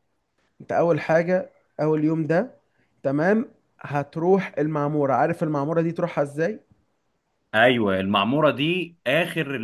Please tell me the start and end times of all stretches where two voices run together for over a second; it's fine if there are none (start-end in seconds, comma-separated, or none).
none